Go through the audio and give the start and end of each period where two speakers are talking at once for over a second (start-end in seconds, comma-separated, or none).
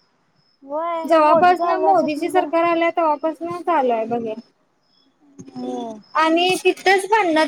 1.1-2.5